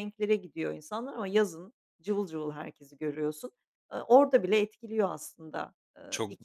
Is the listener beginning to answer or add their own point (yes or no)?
yes